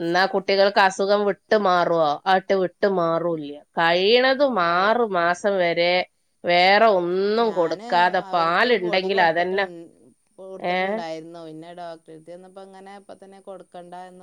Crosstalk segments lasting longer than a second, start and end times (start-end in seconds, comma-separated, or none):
none